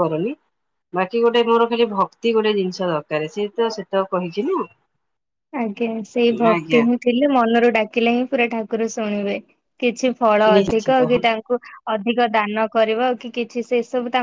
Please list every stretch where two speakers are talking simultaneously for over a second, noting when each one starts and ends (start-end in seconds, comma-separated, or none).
none